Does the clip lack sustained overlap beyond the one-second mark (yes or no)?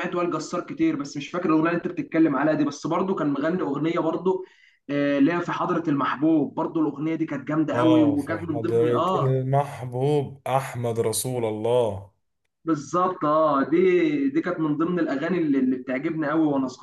no